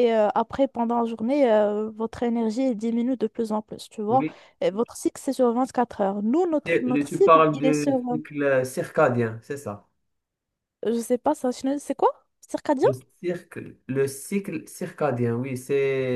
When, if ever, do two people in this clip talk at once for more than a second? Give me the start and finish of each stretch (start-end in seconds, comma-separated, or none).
6.6-8.0